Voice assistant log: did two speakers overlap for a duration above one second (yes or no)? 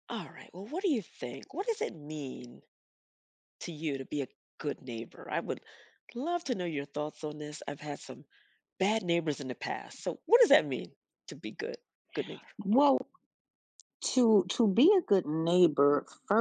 no